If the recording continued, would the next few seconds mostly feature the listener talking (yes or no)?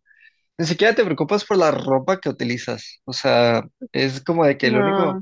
no